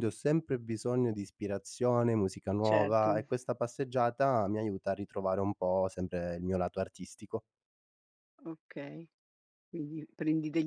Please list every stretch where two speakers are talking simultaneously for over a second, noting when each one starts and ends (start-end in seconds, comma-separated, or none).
none